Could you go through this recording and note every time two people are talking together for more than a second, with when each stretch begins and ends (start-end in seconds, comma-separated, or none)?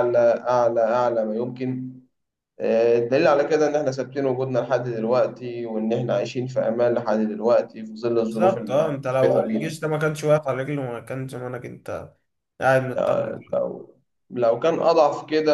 8.1-9.8